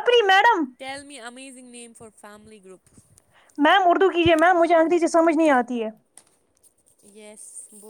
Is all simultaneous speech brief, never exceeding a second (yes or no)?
yes